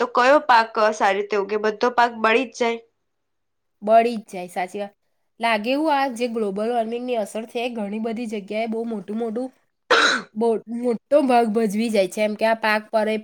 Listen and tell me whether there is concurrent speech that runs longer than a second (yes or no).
no